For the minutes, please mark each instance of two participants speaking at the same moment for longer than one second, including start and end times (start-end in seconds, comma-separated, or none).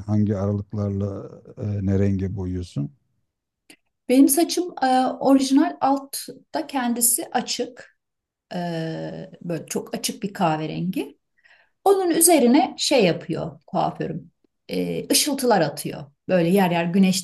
none